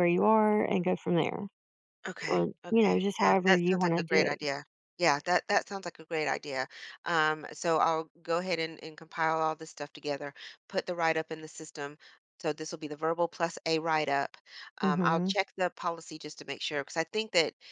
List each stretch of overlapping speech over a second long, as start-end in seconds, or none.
2.3-4.4